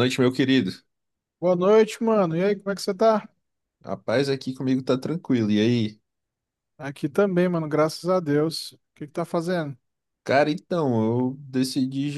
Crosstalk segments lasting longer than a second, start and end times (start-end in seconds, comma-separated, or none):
none